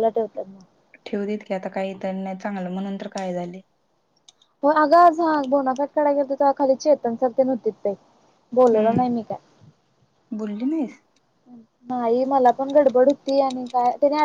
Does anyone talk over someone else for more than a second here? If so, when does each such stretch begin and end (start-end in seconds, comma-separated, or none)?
none